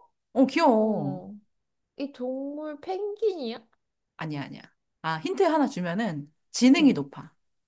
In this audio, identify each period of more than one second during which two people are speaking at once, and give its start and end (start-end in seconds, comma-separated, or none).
none